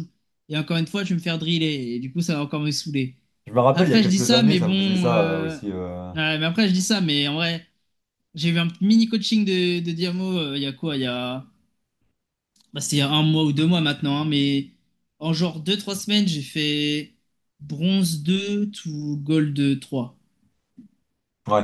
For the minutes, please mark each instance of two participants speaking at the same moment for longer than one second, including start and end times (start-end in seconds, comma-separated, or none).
3.7-5.6